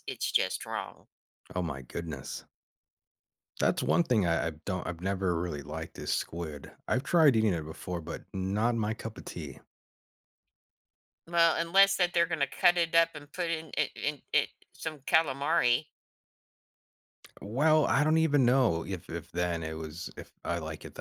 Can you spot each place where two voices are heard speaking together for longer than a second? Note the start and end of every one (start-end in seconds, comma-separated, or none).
none